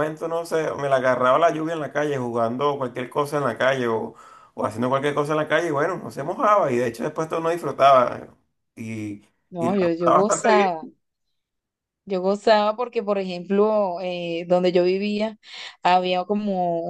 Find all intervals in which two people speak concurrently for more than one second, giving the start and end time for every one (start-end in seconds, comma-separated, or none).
9.6-10.9